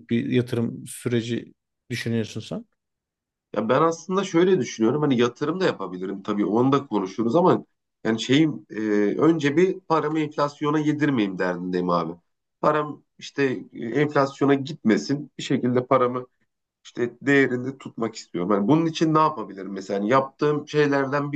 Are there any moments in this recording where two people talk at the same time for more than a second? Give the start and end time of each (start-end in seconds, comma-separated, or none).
none